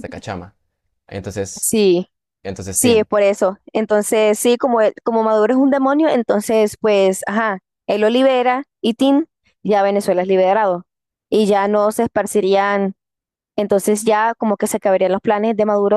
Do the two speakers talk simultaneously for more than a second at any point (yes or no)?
no